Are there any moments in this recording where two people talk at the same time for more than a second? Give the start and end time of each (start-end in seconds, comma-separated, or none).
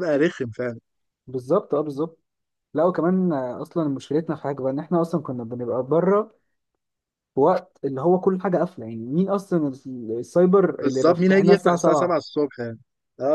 10.8-12.2